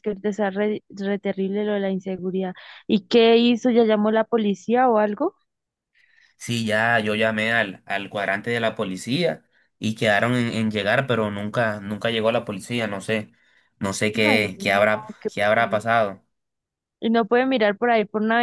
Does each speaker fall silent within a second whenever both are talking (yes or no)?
no